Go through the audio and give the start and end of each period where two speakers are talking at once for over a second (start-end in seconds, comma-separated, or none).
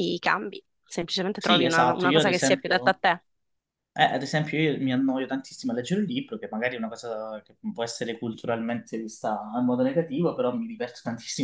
1.4-3.0